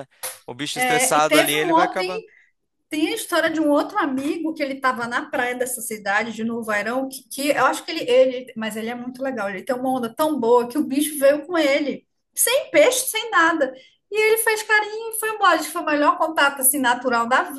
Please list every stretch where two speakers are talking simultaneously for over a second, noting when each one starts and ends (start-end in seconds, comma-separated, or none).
0.7-1.9